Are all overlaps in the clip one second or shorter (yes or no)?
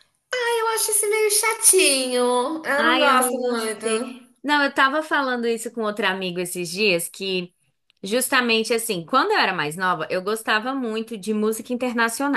no